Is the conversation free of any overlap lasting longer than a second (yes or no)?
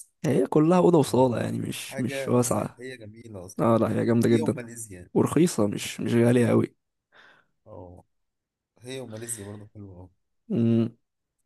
no